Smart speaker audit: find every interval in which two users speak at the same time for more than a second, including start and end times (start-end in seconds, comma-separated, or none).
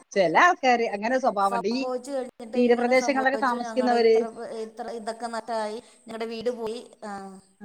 2.6-4.2